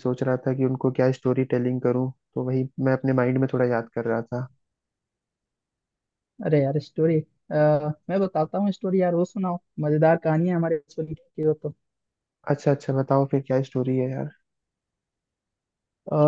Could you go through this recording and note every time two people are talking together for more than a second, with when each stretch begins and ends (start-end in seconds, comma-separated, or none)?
none